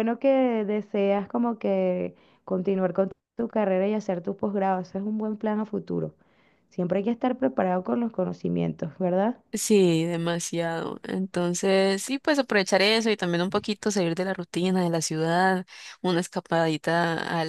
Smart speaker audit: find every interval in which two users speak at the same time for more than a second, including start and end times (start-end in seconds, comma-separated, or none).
none